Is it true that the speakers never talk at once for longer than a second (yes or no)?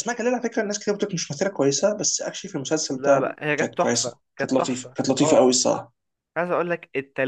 no